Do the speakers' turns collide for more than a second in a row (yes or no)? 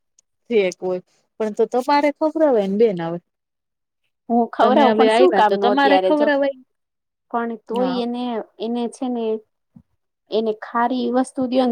yes